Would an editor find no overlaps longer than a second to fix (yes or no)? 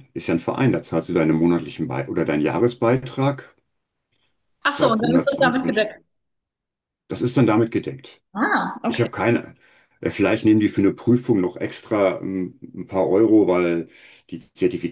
no